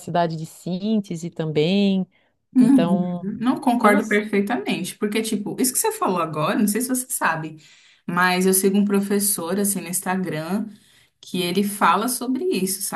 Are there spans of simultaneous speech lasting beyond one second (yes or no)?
no